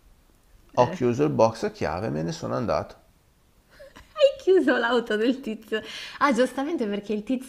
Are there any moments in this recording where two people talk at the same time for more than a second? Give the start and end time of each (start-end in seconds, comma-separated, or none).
none